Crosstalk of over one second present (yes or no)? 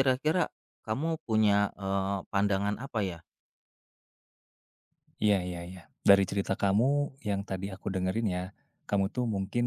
no